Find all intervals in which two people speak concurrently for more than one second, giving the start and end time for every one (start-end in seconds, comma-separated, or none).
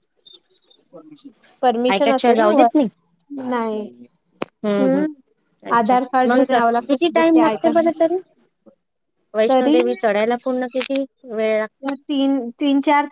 5.8-7.8